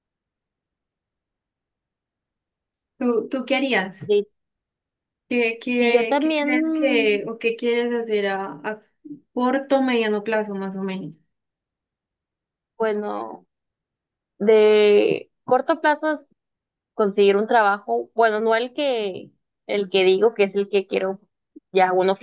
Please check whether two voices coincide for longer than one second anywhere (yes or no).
yes